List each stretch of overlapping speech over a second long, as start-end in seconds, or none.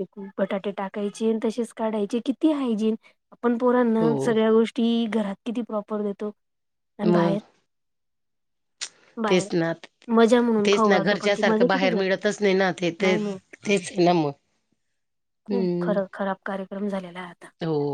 10.7-12.2